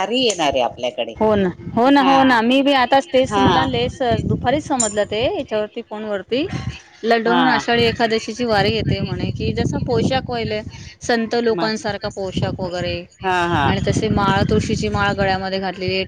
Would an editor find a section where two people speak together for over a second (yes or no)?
no